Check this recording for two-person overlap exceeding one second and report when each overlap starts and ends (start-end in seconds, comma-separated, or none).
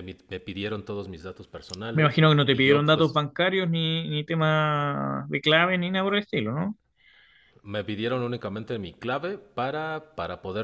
1.9-3.2